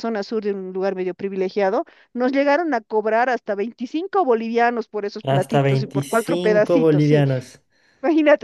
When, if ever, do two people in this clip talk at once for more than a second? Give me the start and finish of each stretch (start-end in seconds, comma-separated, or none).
5.2-7.2